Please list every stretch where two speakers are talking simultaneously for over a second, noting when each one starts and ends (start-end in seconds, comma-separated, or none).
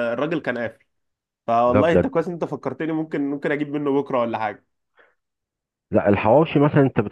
none